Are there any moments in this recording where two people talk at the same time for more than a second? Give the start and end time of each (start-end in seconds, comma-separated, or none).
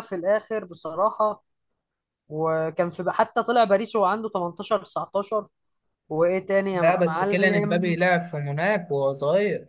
6.7-8.0